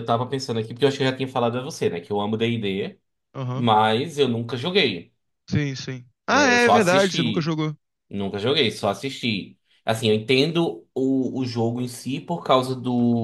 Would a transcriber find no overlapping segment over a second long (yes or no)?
no